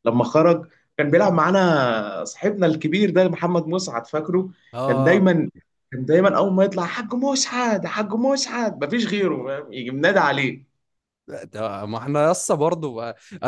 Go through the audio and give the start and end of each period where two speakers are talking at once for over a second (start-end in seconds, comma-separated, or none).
none